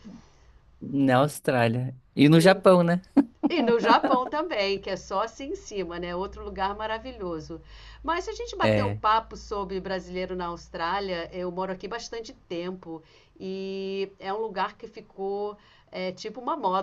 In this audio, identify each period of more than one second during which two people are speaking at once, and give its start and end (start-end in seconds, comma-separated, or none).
none